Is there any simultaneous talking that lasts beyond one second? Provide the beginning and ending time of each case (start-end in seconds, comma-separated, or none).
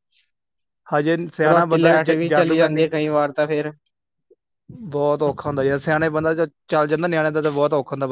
1.5-2.9